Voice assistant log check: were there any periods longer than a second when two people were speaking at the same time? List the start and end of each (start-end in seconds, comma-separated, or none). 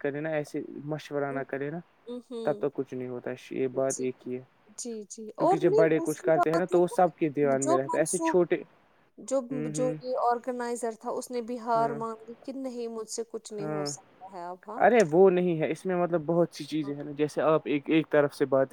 5.4-8.4